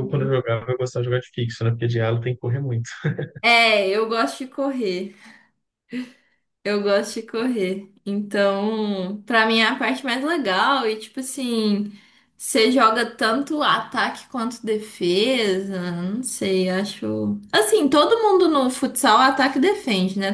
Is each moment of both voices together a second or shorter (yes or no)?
yes